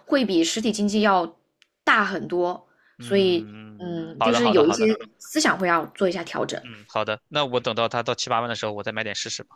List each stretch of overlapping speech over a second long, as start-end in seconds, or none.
3.0-4.9